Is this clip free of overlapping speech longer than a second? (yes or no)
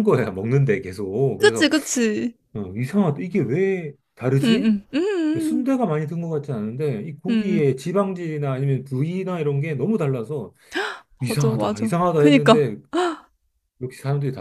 no